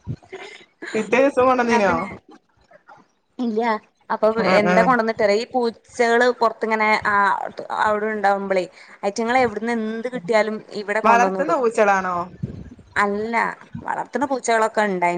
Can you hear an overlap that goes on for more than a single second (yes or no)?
no